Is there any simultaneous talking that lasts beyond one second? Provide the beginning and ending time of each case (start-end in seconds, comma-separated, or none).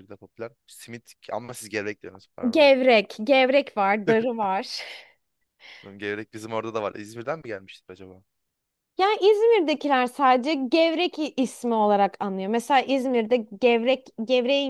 none